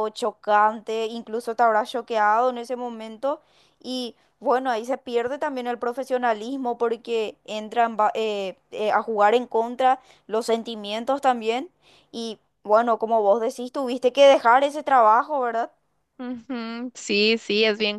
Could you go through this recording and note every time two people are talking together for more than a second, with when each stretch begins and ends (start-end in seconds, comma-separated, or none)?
none